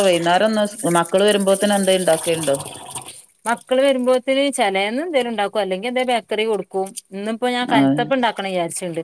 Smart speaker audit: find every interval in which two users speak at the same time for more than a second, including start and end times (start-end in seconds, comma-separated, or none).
none